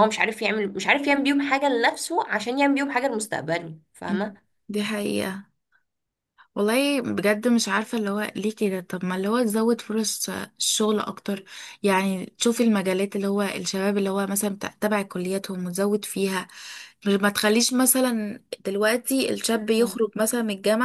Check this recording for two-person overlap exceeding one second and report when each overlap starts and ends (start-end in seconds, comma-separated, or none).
none